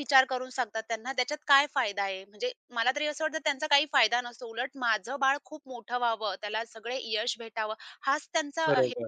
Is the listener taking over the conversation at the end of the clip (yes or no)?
no